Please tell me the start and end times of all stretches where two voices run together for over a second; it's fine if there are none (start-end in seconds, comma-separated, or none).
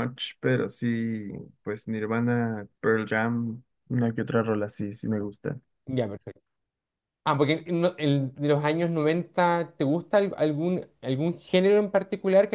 none